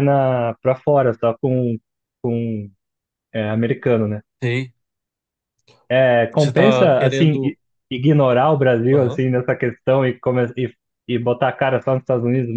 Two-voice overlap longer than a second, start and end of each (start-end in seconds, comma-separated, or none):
6.3-7.6